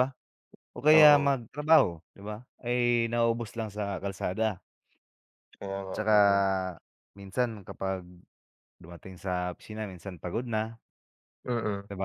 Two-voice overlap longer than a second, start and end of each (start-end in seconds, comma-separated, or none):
none